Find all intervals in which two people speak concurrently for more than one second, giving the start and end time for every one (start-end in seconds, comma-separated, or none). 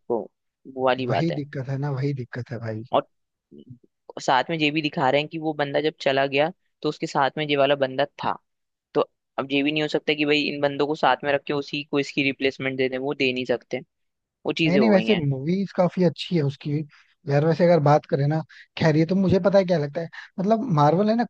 none